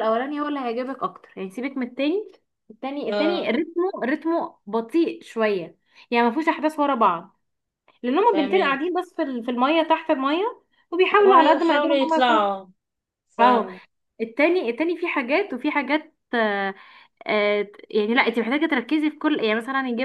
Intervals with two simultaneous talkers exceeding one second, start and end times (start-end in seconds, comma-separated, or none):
11.2-12.5